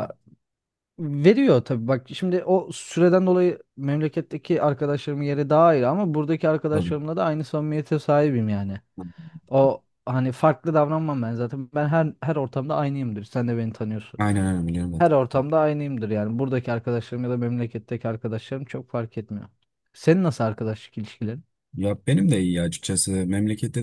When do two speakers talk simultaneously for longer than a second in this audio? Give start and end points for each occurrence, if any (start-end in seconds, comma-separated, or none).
none